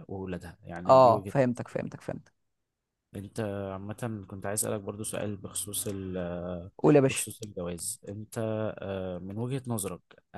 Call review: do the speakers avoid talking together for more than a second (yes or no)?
yes